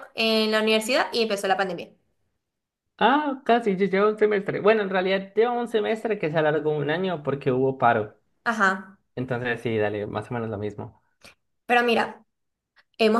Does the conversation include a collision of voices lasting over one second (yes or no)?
no